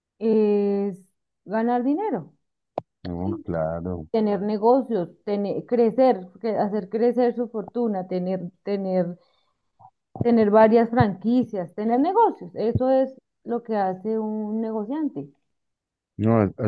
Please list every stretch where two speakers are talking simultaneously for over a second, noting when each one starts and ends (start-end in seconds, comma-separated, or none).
none